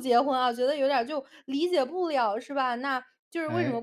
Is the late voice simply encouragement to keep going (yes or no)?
yes